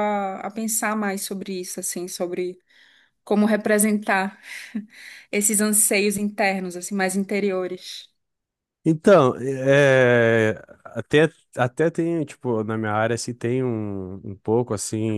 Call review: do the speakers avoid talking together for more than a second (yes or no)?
yes